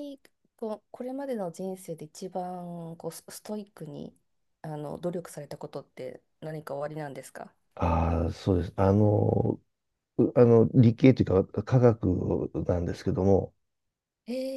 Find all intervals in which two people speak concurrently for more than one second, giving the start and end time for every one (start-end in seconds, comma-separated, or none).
none